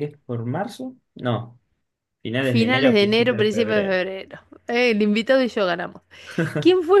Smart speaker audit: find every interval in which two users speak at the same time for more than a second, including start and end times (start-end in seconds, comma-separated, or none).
2.4-4.0